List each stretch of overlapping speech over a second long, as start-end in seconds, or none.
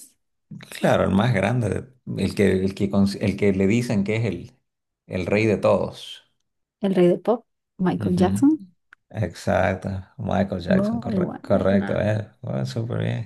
10.7-12.1